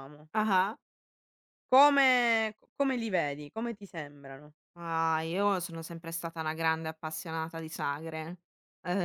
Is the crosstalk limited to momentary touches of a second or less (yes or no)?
yes